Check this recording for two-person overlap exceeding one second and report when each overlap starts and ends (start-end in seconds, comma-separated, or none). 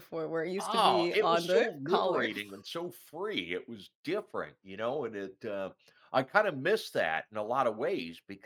0.6-2.3